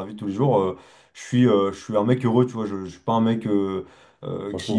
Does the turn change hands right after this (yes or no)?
no